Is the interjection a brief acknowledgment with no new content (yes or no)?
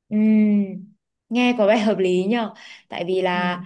yes